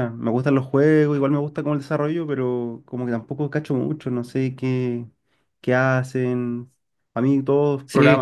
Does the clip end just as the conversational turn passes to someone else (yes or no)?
yes